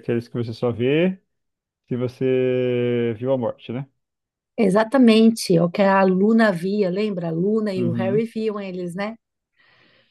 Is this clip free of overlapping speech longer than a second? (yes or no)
yes